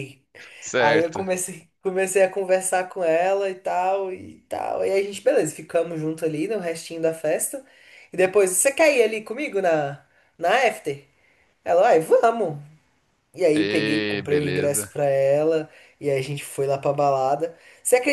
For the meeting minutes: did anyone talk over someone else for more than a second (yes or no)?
yes